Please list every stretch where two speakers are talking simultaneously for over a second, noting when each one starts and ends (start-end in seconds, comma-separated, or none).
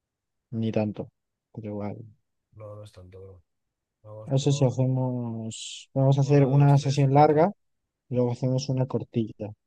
6.2-7.5